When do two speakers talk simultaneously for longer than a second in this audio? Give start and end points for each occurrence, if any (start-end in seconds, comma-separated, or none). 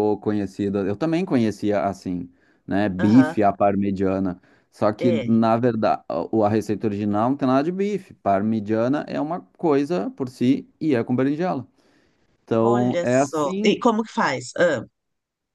12.6-13.8